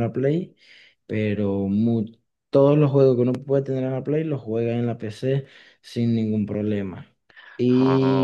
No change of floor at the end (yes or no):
yes